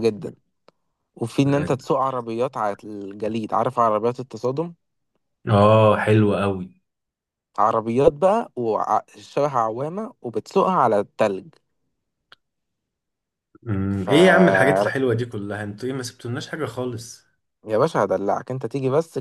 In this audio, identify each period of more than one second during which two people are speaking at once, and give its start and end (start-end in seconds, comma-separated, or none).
none